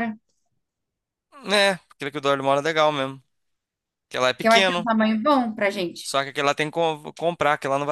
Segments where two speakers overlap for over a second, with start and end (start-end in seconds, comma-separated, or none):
none